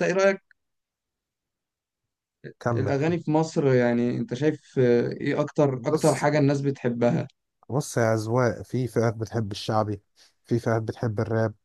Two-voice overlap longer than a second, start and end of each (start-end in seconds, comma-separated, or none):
none